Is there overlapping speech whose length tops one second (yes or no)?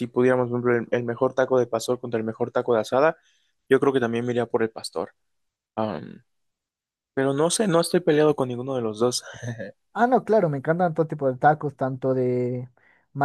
no